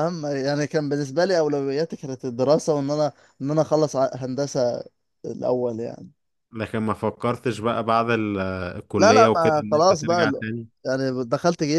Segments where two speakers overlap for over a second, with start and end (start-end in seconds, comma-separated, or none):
9.0-10.4